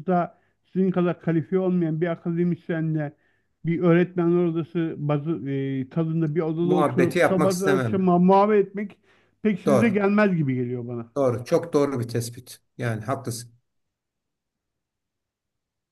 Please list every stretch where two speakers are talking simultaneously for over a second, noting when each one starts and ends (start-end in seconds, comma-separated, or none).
6.6-8.1